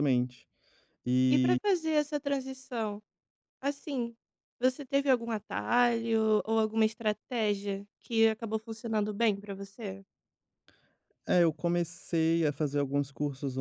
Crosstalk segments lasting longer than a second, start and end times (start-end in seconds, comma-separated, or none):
none